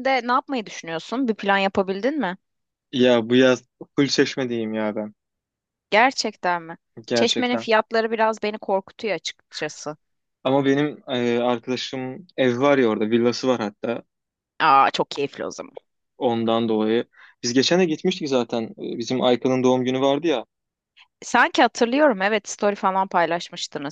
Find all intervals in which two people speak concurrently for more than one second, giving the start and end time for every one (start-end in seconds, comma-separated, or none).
none